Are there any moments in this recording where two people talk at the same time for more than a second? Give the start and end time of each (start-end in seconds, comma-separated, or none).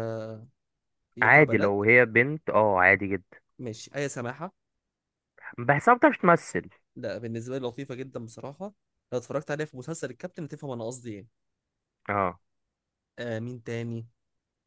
none